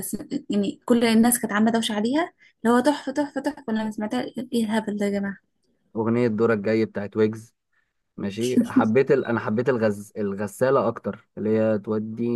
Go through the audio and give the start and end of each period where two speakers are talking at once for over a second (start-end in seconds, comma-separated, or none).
none